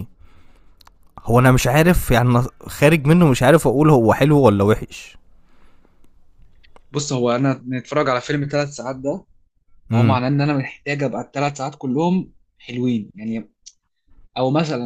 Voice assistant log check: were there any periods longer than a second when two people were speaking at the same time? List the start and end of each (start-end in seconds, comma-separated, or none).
none